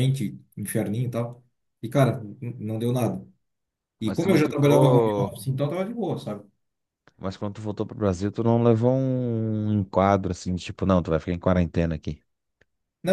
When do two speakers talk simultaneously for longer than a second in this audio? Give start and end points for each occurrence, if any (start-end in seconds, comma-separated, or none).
4.0-5.4